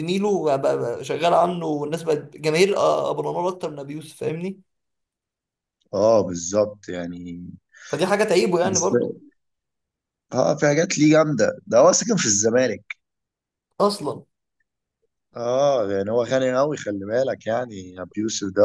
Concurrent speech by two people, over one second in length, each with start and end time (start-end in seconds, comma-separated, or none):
none